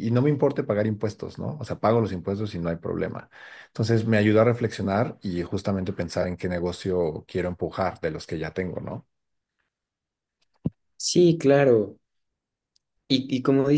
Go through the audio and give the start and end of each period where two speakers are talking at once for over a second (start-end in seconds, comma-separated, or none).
none